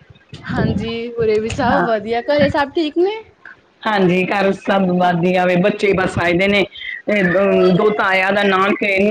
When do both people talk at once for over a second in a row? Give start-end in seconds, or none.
none